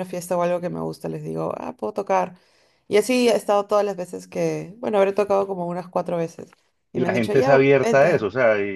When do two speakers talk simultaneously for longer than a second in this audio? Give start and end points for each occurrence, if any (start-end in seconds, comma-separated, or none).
6.9-8.3